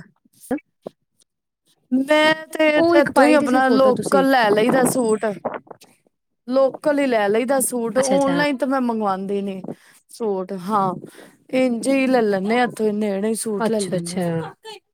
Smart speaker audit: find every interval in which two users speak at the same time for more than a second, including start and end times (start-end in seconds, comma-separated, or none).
2.8-4.2